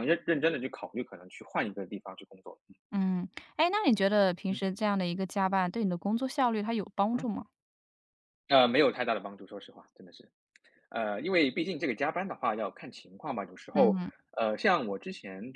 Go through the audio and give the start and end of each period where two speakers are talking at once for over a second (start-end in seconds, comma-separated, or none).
none